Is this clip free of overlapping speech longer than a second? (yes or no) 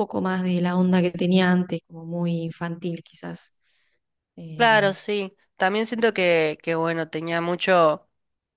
yes